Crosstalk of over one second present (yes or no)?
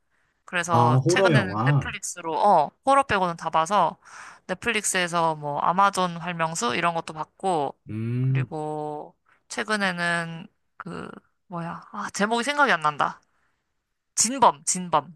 yes